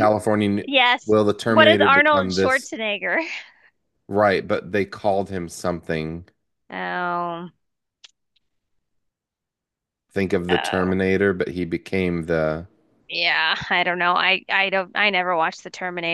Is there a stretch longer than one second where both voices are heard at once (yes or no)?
yes